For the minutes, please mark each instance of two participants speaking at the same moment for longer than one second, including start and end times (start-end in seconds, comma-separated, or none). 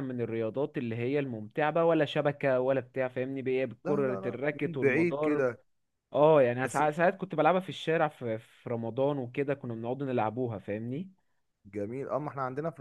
3.8-5.5